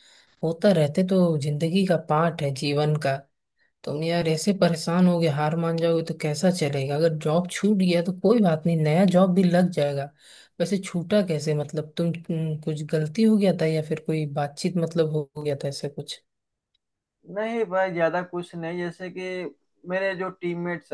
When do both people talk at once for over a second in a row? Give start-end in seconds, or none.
none